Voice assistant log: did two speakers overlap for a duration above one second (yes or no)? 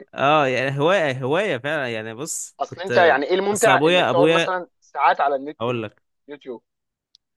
yes